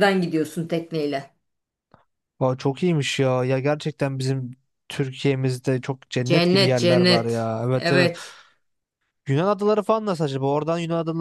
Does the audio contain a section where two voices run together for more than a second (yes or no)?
yes